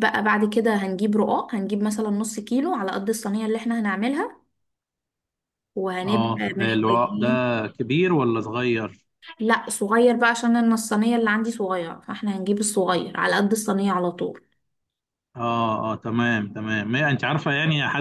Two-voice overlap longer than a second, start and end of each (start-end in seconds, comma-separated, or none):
6.1-7.3